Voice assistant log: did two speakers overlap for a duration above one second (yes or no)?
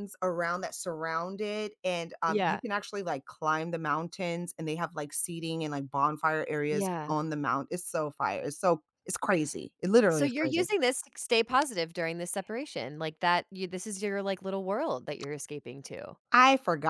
no